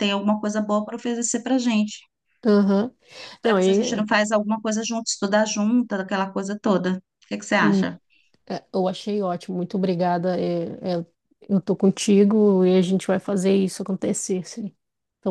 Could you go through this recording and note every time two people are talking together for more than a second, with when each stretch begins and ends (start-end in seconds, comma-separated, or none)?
none